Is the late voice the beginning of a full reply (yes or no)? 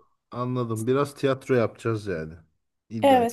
yes